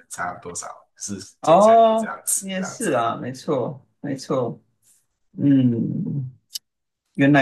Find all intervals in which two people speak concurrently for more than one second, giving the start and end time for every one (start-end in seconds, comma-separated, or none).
1.4-2.9